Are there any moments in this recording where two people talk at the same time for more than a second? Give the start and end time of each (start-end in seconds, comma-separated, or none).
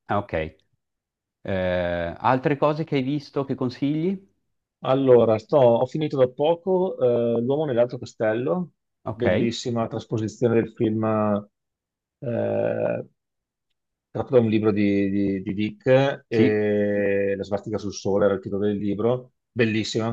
none